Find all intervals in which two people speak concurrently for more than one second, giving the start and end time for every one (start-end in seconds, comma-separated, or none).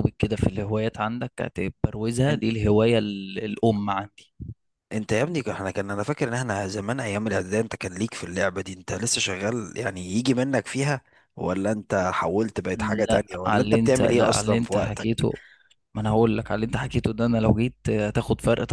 13.1-15.3